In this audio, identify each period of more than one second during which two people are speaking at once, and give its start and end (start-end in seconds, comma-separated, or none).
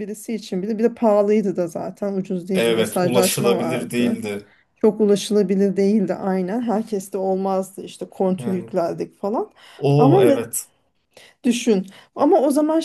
2.5-4.2